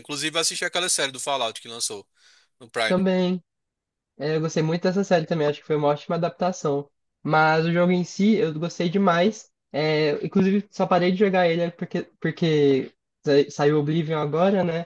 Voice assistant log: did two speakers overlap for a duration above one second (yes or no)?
no